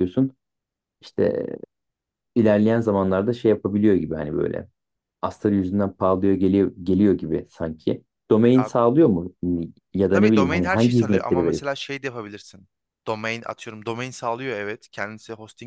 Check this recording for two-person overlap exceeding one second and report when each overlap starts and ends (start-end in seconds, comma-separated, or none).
10.1-11.6